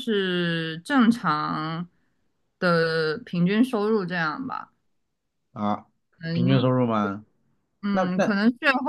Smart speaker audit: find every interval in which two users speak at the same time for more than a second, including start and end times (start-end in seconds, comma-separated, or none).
none